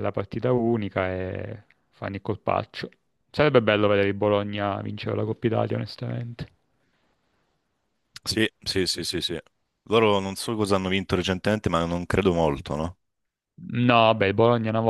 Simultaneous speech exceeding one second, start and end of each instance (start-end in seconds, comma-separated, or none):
none